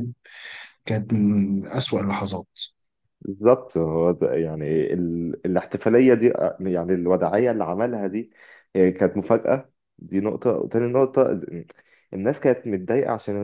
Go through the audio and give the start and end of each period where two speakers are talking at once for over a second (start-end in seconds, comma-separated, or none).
none